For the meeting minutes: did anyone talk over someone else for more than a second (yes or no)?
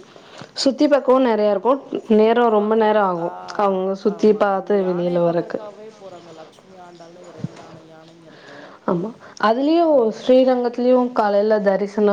yes